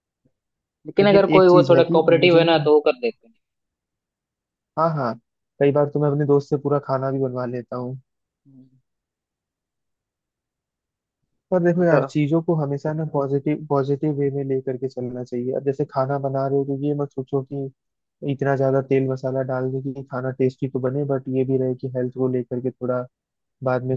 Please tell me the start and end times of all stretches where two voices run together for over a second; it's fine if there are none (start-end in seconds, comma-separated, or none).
1.0-2.7